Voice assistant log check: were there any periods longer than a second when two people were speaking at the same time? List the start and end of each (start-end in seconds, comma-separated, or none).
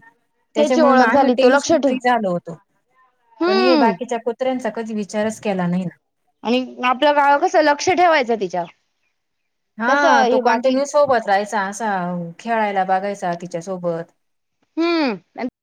0.6-1.9